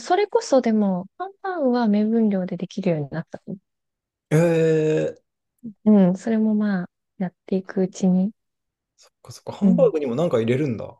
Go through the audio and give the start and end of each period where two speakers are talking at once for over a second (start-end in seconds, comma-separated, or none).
none